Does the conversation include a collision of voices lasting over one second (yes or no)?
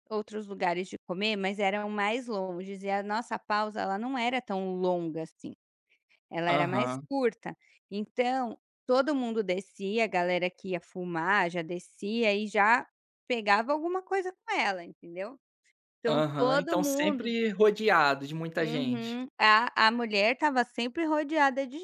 yes